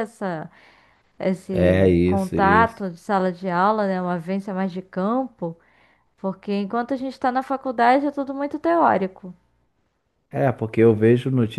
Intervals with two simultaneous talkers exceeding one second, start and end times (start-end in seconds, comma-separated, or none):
1.5-2.9